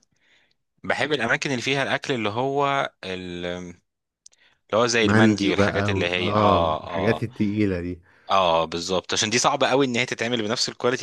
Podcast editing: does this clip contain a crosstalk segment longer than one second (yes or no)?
yes